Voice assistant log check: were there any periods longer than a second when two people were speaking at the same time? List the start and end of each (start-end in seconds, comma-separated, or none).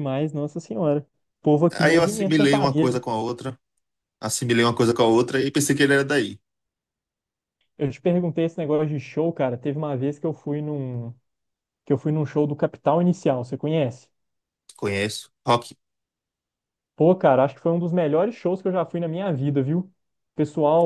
1.7-3.0